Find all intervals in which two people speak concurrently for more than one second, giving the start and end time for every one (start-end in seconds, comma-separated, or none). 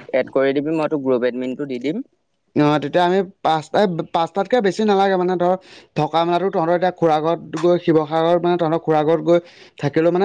none